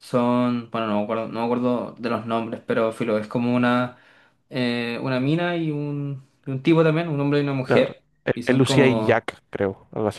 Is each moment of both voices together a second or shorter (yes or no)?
no